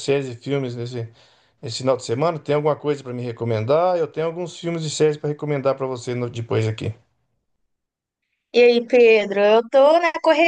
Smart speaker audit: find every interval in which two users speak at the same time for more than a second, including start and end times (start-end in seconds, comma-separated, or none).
none